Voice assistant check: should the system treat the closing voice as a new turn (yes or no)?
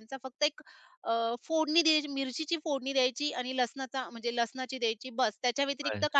no